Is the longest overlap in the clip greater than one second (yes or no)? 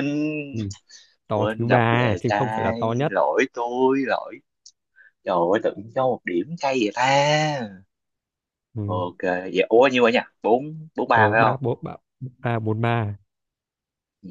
yes